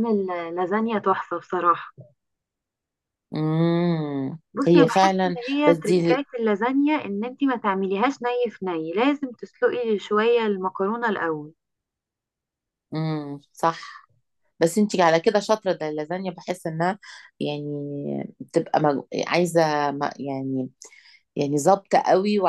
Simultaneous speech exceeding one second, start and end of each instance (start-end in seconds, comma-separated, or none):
4.5-6.2